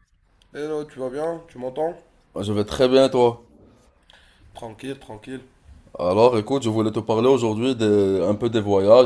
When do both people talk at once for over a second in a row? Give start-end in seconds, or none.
none